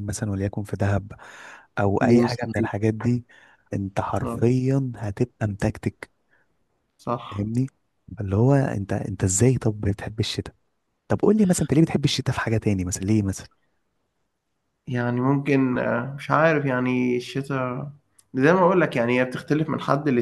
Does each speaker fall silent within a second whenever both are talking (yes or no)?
yes